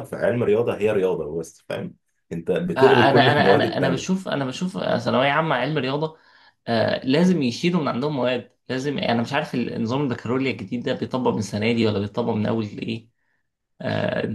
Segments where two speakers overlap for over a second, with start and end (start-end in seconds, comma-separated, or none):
2.8-4.3